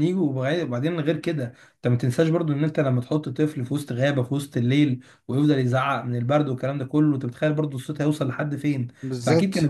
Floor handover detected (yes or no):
yes